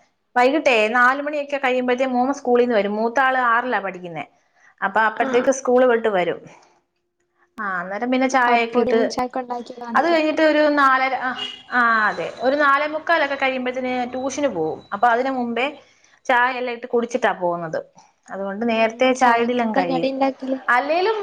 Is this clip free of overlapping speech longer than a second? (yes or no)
no